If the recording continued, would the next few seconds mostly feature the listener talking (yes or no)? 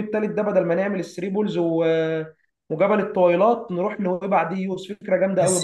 yes